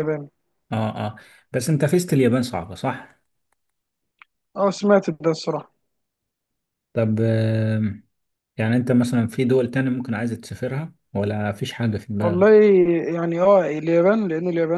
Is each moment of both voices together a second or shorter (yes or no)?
yes